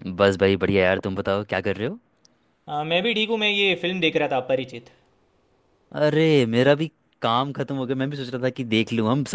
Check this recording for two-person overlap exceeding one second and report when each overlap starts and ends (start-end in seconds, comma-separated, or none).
none